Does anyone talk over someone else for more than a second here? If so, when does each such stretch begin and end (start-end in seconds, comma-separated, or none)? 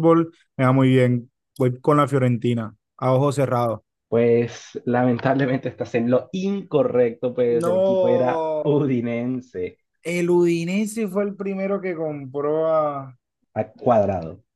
7.6-8.8